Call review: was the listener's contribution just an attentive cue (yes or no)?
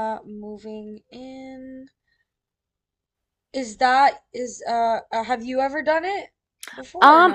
no